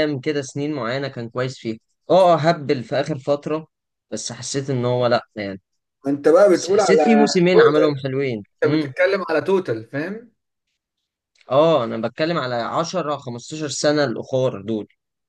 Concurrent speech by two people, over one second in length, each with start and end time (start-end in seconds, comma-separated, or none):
6.5-8.0